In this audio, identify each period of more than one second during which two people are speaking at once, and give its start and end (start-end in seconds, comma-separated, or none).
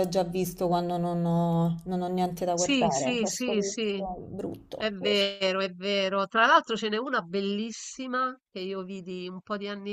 2.5-4.0